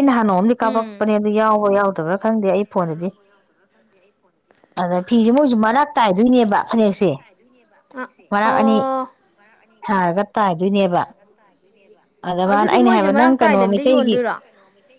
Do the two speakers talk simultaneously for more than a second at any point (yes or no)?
yes